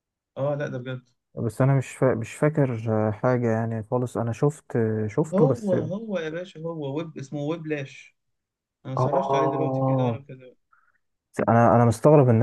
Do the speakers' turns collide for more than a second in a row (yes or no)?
yes